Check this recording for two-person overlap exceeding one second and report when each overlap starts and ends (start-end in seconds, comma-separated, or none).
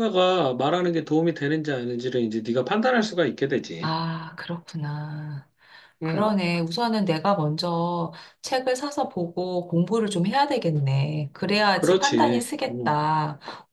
11.7-13.0